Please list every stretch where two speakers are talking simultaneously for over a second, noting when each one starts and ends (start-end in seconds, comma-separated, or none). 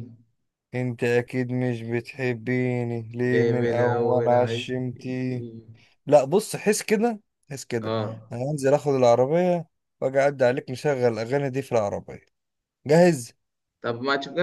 3.2-4.6